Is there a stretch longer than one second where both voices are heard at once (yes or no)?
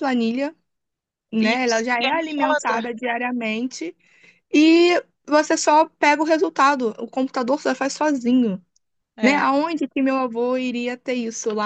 yes